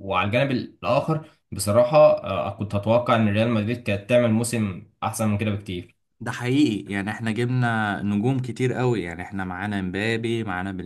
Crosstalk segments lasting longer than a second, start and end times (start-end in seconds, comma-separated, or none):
none